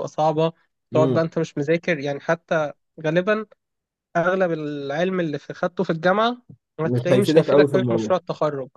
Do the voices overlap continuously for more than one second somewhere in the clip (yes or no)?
yes